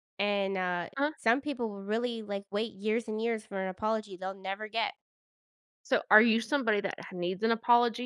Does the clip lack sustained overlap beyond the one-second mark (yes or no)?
yes